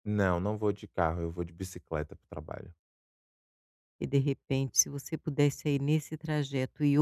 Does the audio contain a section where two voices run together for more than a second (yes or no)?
no